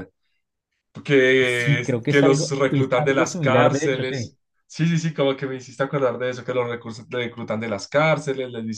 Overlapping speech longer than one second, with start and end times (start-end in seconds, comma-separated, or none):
1.4-4.3